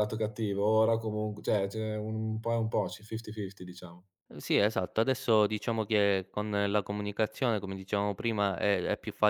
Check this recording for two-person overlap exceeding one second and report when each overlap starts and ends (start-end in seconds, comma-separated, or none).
none